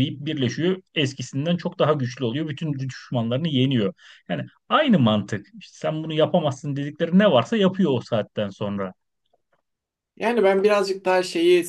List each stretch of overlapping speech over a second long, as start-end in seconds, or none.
none